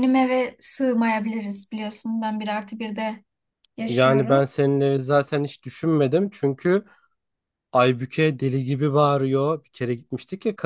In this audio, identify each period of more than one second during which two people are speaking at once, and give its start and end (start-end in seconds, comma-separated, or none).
none